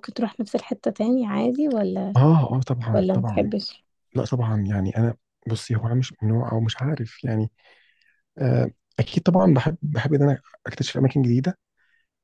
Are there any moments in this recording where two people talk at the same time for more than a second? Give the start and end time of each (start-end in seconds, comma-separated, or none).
none